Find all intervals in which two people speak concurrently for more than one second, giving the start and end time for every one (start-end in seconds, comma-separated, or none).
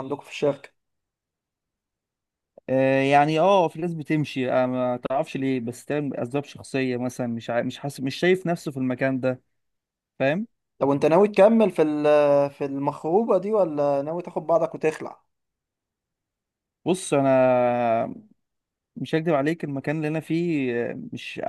none